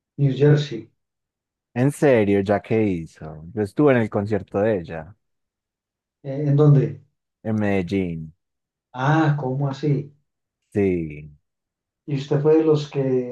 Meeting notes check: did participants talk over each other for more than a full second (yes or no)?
no